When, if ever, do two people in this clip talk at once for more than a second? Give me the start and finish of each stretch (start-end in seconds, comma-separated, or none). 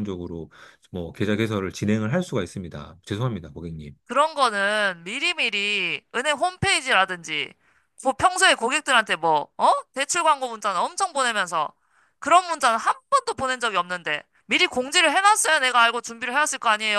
none